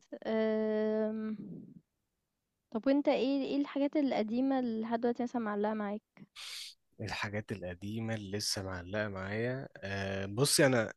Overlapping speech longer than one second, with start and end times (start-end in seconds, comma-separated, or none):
none